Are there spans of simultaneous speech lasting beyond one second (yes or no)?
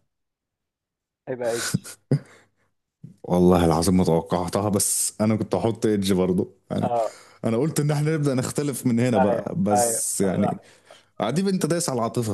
yes